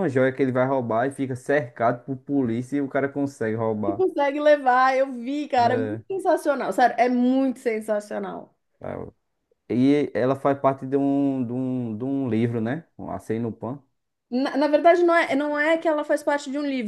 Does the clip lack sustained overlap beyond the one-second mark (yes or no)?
yes